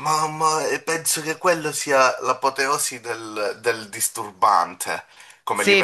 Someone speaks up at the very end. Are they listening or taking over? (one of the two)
taking over